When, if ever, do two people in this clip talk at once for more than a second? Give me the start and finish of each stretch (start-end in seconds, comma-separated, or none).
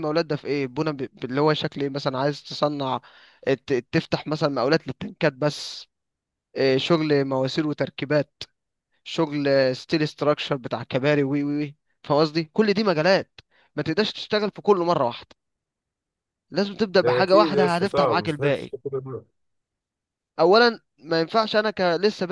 17.0-18.7